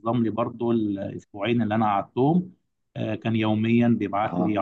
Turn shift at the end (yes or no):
no